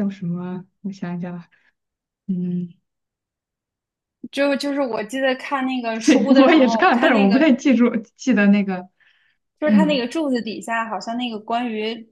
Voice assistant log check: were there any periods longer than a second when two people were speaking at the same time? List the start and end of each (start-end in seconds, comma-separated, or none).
6.0-7.5